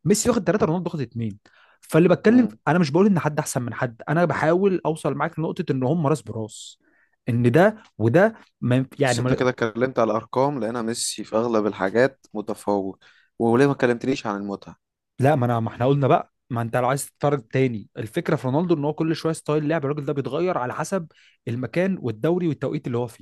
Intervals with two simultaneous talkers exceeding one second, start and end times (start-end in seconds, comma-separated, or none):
none